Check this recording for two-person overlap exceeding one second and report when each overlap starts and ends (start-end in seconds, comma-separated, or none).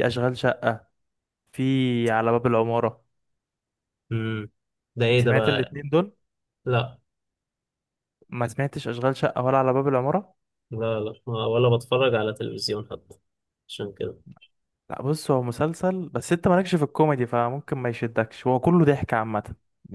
none